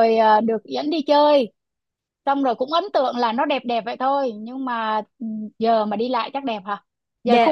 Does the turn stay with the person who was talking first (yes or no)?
no